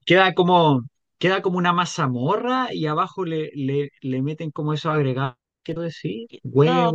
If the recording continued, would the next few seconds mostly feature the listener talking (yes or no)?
yes